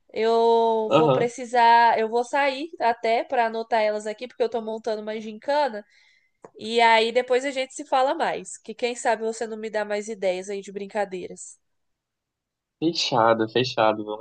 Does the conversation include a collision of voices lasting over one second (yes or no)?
no